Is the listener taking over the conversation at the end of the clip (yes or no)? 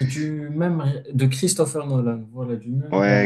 yes